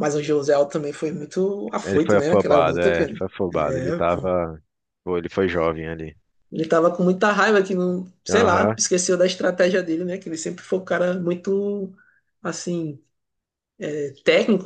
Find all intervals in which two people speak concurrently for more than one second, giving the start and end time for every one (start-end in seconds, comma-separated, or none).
1.8-4.3